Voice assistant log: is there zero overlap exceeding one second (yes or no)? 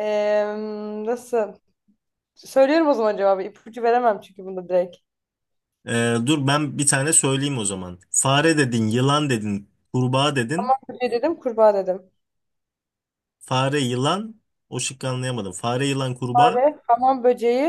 yes